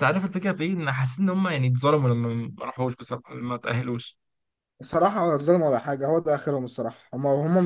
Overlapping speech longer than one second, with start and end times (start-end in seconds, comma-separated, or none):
none